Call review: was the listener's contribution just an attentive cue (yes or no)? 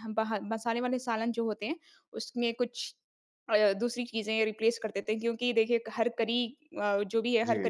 yes